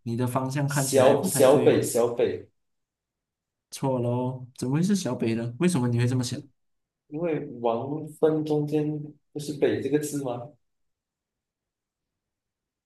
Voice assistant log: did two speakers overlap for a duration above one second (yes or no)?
yes